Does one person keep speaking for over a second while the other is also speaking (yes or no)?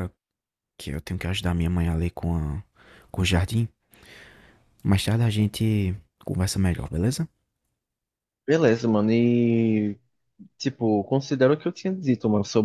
no